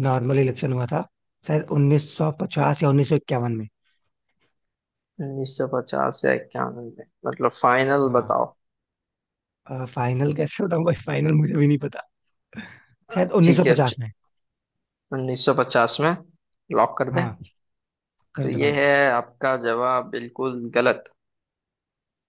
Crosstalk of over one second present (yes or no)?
no